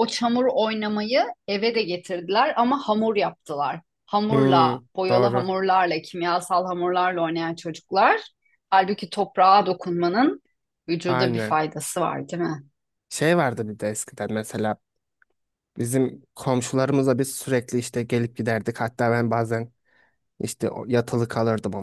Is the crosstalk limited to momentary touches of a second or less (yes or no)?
yes